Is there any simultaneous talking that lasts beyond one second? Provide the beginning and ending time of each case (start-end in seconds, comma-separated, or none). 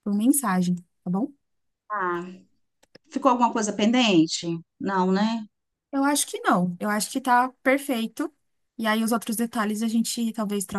none